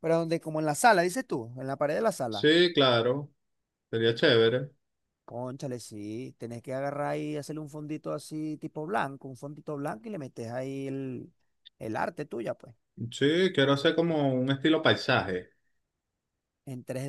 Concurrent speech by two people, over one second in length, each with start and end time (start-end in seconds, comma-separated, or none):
none